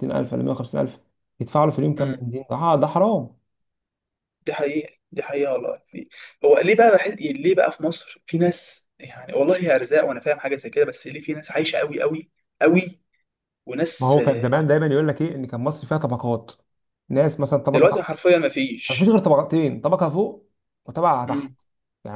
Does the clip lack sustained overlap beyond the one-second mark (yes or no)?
yes